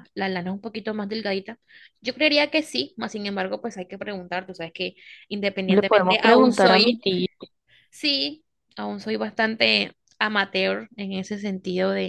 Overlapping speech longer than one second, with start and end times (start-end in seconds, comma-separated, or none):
5.7-7.0